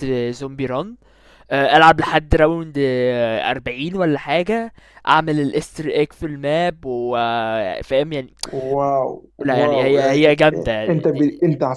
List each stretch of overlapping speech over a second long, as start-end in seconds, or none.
9.6-11.3